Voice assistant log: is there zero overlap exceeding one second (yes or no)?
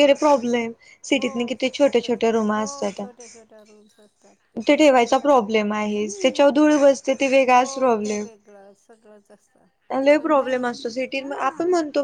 no